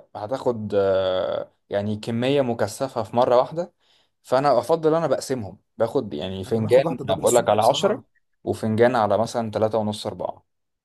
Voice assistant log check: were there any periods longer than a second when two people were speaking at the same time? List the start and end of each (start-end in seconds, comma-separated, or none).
6.5-8.0